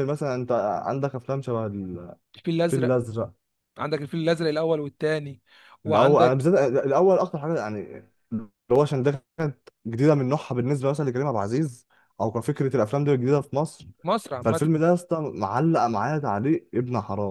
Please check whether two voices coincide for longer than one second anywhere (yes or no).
no